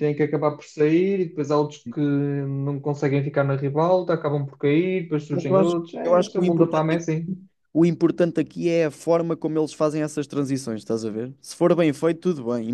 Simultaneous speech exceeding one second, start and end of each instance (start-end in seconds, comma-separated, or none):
5.3-7.0